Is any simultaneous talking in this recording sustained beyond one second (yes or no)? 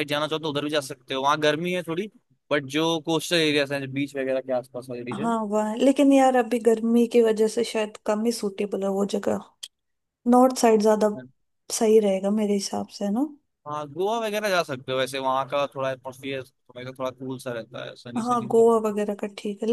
no